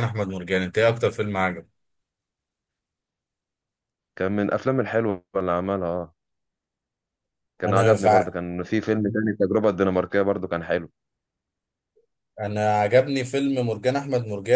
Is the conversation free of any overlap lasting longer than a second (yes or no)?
yes